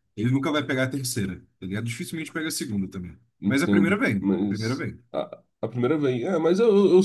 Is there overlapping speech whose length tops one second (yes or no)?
yes